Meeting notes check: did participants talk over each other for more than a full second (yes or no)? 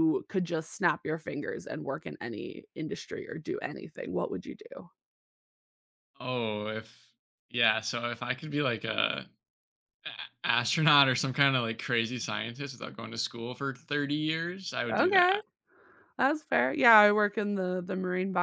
no